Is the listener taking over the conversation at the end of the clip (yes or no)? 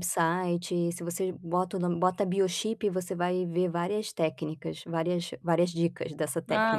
yes